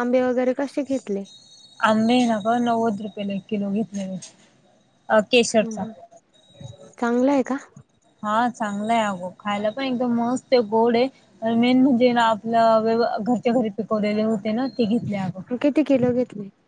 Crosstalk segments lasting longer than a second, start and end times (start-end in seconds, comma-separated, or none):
none